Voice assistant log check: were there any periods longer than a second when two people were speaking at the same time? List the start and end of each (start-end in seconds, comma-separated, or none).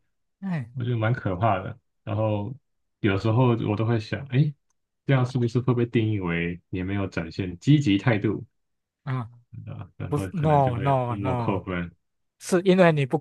10.1-11.6